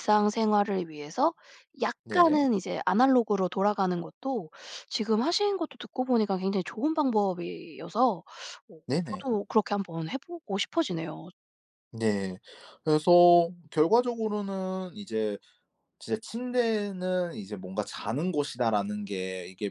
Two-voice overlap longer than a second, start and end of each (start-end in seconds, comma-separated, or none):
none